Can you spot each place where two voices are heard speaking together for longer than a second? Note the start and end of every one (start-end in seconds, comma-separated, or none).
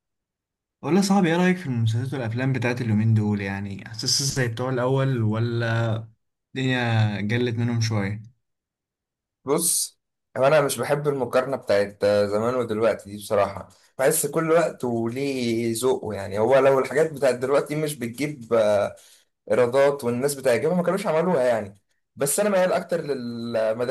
none